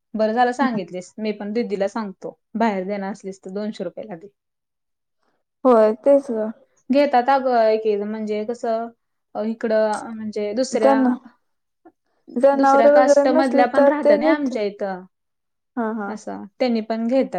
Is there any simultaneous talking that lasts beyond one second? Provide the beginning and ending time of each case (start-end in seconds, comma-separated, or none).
12.6-14.5